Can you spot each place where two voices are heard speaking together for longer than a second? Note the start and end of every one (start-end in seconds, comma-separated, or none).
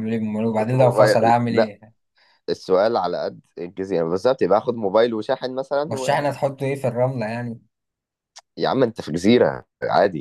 0.5-1.7